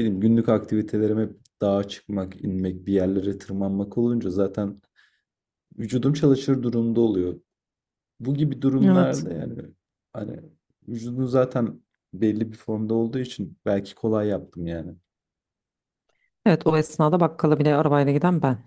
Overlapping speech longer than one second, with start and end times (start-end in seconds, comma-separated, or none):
none